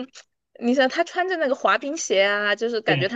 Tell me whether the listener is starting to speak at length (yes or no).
no